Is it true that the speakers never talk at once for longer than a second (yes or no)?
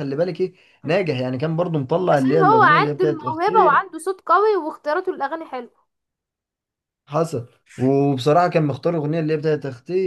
no